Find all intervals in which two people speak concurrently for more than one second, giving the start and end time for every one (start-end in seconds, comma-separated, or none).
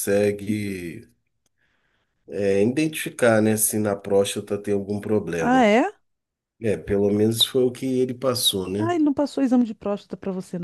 none